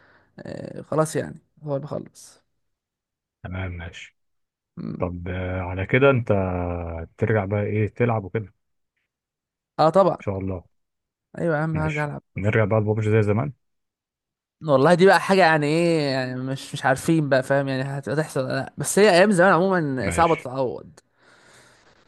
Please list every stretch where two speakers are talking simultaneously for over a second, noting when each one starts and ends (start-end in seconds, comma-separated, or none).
none